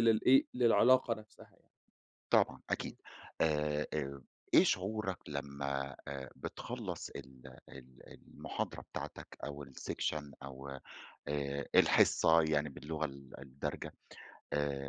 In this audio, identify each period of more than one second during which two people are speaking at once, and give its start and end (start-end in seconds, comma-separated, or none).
none